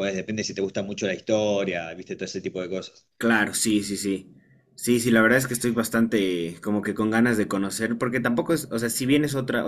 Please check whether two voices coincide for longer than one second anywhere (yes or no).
no